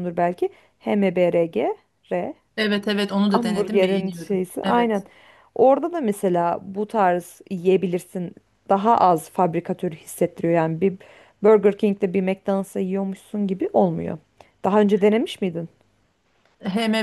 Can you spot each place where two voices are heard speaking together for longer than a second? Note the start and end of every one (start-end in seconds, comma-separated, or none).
3.3-5.0